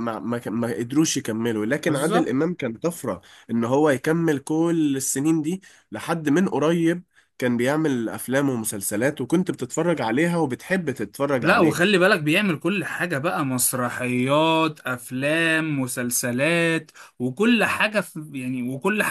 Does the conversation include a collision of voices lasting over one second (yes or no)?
no